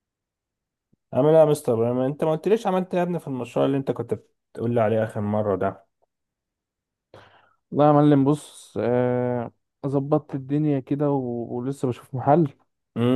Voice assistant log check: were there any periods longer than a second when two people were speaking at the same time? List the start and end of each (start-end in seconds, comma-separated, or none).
none